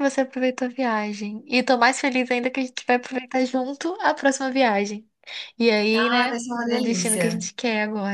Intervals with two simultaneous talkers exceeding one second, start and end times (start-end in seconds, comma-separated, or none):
5.9-7.4